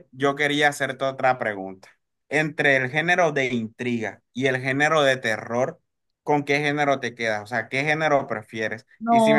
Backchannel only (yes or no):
yes